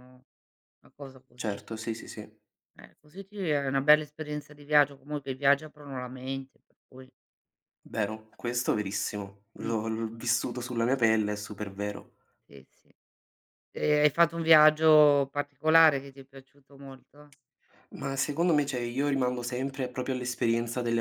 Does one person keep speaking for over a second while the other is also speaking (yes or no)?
no